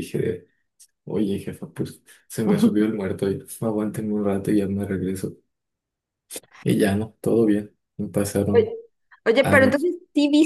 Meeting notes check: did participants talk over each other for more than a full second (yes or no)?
no